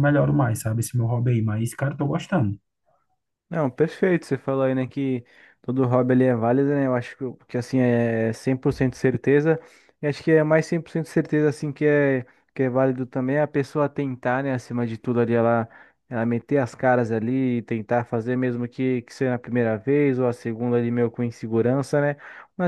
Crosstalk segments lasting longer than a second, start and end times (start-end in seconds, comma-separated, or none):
none